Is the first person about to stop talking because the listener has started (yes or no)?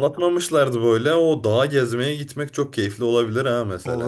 yes